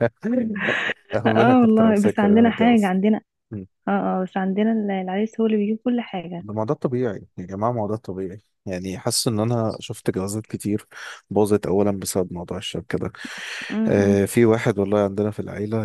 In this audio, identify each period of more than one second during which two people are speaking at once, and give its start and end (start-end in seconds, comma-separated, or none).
1.3-2.9